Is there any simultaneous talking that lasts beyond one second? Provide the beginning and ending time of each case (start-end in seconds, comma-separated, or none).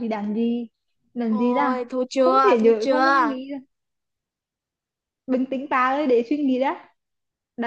1.3-3.4